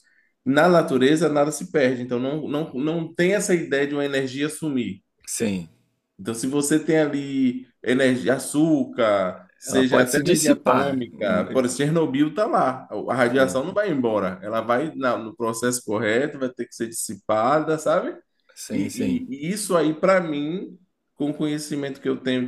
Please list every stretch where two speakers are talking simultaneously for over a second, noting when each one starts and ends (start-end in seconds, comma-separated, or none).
9.7-11.0